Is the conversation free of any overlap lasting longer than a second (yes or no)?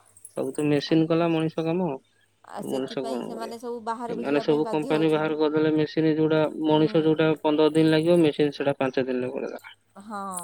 no